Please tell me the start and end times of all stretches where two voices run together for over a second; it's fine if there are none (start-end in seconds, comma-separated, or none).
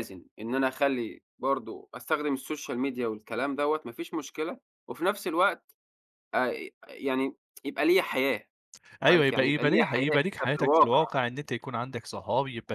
9.1-11.0